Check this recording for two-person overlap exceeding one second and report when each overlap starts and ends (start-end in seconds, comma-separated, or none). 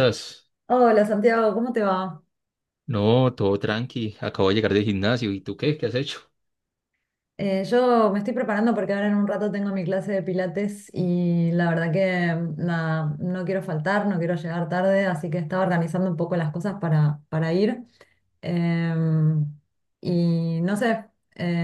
none